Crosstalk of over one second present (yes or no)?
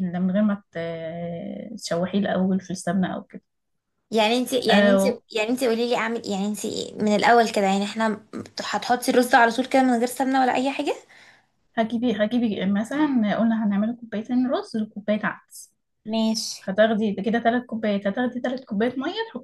no